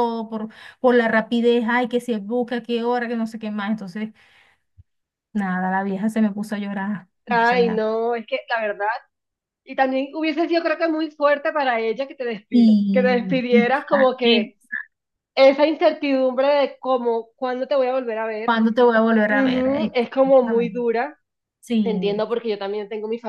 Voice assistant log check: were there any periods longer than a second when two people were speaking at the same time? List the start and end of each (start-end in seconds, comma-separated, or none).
12.5-14.5, 19.3-20.9